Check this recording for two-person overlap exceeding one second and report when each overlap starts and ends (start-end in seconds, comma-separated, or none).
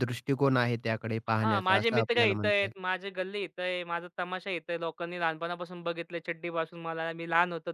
1.3-2.7